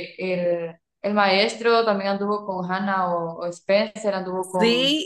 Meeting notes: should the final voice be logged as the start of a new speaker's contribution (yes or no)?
yes